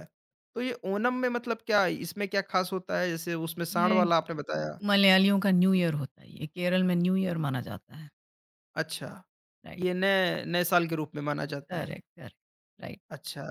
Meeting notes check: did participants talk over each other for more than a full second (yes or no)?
no